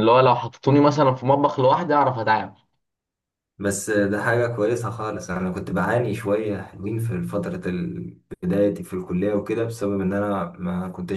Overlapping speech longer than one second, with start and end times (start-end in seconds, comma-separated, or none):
none